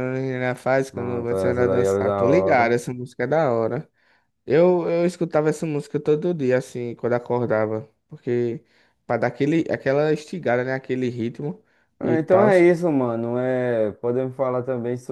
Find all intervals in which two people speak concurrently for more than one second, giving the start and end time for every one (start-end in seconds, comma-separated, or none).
0.9-2.8